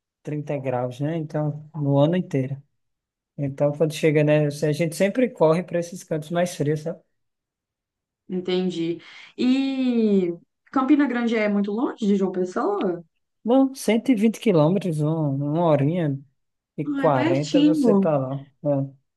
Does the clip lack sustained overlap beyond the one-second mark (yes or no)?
no